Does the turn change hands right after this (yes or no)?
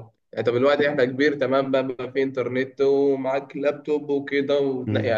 no